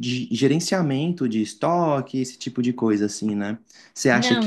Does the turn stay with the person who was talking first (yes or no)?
yes